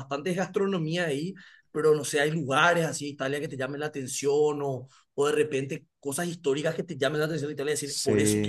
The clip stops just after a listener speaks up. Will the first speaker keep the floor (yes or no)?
no